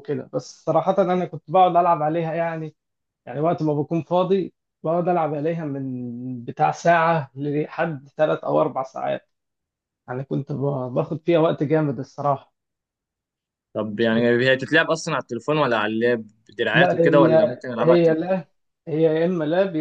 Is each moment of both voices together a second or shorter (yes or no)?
no